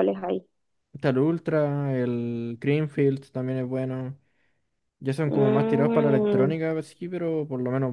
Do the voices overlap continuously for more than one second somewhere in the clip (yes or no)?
yes